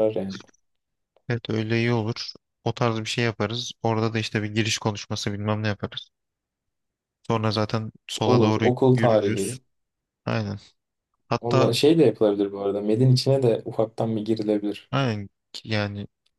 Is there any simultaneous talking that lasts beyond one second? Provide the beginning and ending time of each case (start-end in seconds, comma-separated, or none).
8.2-9.6